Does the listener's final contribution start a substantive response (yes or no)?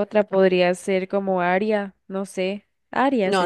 yes